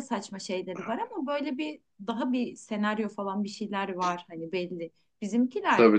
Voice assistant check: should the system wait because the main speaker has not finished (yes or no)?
yes